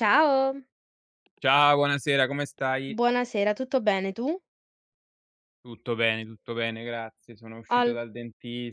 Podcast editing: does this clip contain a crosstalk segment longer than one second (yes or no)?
no